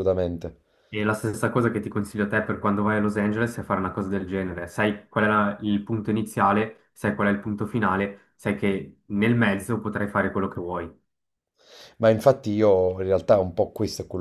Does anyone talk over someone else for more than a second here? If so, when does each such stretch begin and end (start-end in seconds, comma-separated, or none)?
none